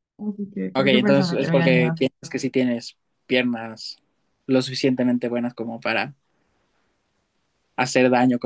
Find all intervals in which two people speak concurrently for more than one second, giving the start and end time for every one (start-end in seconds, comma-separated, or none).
0.7-2.0